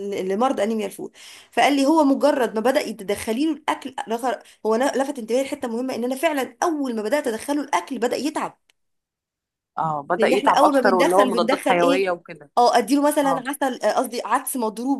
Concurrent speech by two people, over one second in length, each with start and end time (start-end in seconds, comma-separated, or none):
10.2-12.1